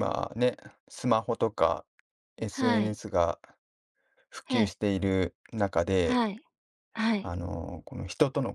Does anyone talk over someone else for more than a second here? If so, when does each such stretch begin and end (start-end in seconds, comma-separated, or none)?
none